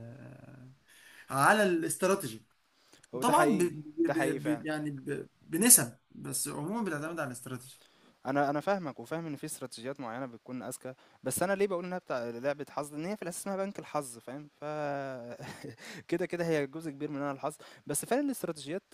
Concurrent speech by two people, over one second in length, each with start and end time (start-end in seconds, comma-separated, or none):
3.2-4.6